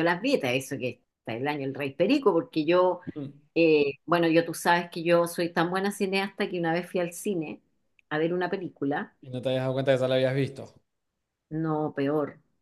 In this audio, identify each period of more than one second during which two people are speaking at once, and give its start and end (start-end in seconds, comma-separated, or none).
none